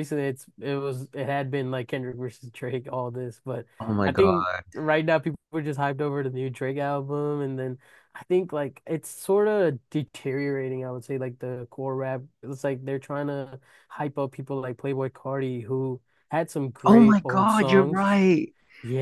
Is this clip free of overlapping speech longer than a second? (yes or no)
no